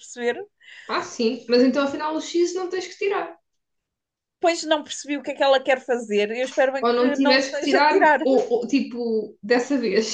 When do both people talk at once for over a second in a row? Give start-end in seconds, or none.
6.8-8.2